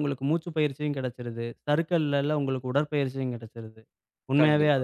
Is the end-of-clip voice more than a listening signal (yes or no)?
no